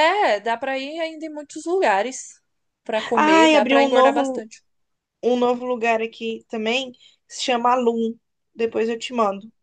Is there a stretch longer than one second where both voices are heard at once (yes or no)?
yes